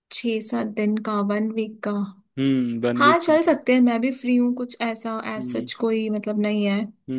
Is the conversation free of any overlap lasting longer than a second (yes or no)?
yes